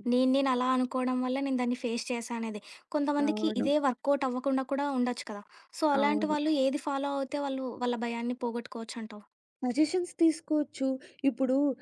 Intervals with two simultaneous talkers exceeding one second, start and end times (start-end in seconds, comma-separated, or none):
none